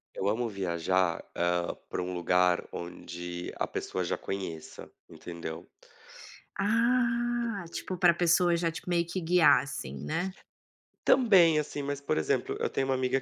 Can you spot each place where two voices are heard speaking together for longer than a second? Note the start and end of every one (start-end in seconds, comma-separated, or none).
none